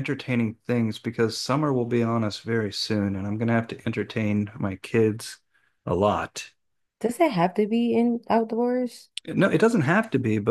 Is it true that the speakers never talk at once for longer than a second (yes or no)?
yes